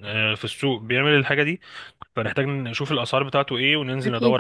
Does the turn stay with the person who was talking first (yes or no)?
yes